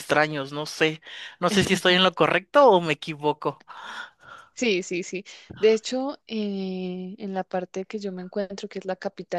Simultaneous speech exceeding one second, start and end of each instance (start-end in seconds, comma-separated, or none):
none